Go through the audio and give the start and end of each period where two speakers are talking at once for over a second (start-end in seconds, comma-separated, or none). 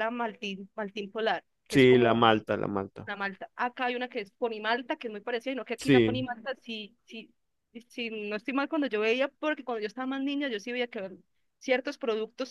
none